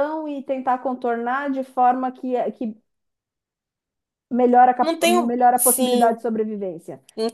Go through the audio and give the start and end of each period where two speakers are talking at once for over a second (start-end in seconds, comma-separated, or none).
4.8-6.2